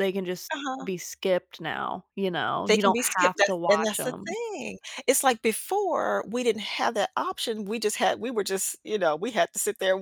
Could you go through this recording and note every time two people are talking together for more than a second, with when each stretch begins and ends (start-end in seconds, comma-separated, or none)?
2.7-4.3